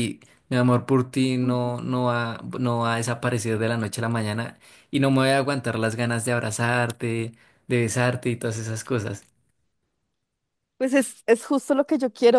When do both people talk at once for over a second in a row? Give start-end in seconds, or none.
none